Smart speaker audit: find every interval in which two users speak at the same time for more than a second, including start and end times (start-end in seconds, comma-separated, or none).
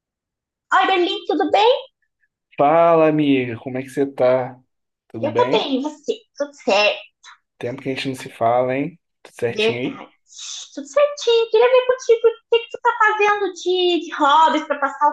none